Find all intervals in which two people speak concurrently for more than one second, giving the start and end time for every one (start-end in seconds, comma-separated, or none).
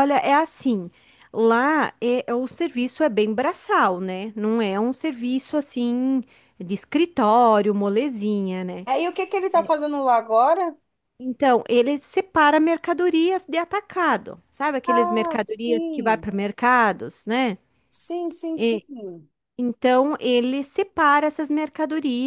14.9-16.2